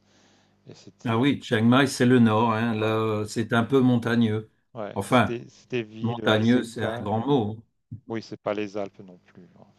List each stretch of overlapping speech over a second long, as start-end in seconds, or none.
6.0-7.3